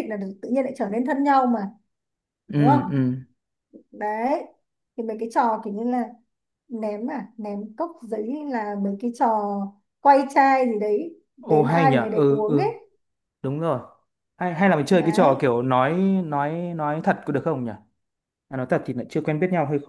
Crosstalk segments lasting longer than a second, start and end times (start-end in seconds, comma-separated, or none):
11.4-12.7